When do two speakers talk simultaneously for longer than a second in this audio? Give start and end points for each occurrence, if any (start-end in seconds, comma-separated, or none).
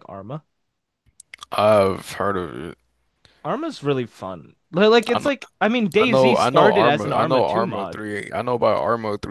6.0-8.0